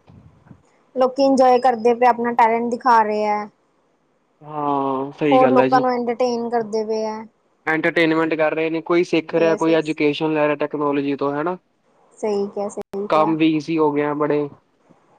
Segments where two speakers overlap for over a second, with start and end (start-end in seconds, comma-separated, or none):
none